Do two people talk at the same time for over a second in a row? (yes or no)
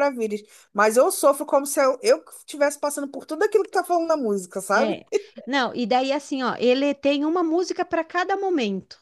no